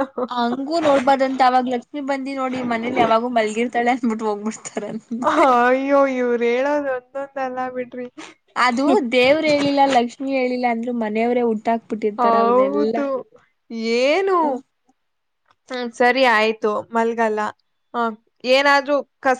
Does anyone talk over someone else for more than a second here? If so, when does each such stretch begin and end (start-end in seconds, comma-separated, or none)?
none